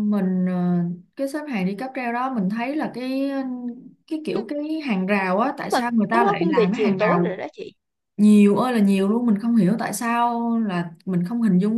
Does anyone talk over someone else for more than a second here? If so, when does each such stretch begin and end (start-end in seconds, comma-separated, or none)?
5.7-7.4